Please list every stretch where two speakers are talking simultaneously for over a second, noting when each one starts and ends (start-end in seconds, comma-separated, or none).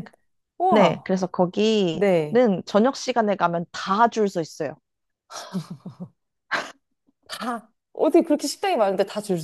none